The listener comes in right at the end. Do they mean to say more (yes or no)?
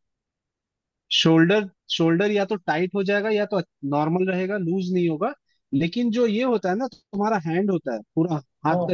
no